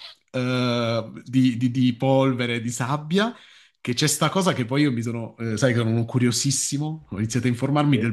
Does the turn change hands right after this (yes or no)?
no